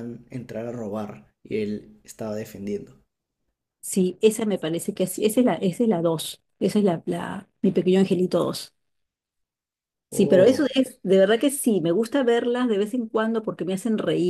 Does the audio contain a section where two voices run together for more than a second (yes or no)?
no